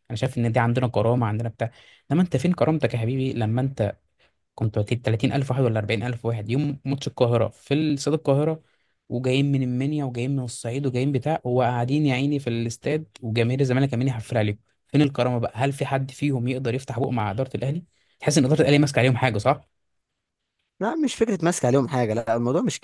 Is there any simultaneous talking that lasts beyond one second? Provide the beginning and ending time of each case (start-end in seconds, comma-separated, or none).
none